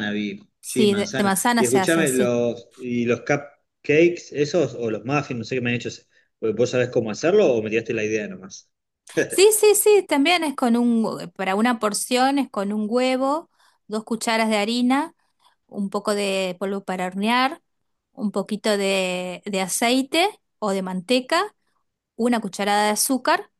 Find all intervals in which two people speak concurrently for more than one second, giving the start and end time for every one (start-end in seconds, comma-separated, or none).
0.6-2.3